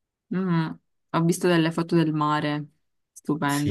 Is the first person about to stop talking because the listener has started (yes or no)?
yes